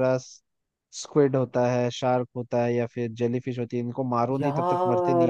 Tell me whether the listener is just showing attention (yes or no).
no